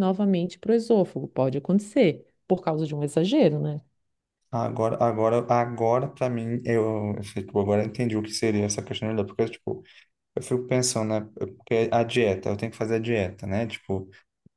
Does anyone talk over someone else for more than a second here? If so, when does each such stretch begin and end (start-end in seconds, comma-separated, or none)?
none